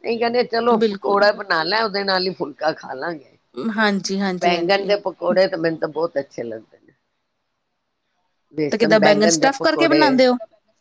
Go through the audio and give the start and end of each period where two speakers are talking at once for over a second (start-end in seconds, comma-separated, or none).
8.7-10.2